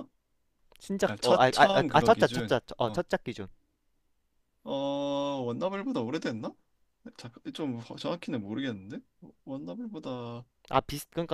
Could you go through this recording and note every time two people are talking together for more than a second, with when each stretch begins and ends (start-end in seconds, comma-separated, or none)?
1.0-3.0